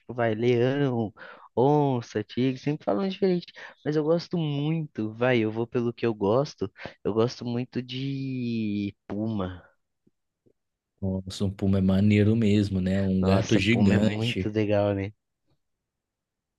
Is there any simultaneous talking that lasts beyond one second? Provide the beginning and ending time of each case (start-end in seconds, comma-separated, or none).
13.2-14.5